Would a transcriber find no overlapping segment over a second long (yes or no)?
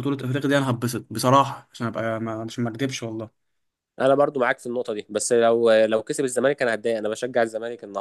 yes